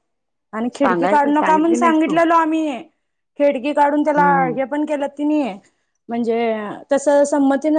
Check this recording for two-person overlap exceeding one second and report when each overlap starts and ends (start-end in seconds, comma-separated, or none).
0.7-2.2